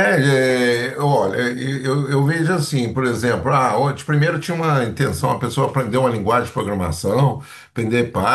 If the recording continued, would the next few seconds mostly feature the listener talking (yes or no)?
no